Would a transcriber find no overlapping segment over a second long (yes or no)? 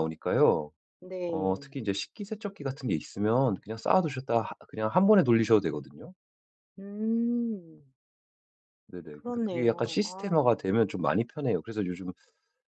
no